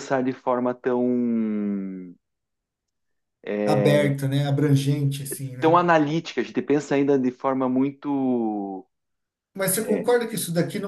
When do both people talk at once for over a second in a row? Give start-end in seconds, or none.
none